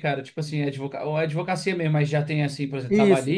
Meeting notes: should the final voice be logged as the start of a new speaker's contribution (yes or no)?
yes